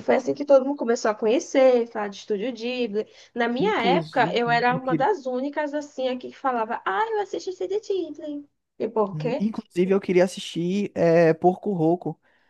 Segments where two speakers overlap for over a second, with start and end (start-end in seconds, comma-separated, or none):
3.6-5.1